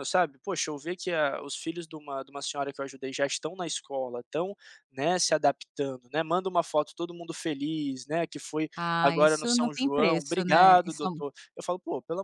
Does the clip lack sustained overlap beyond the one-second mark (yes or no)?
no